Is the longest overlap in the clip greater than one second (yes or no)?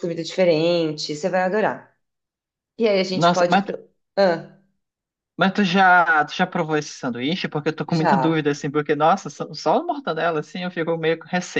no